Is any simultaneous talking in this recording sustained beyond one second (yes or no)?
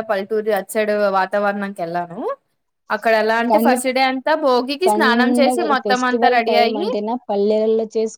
yes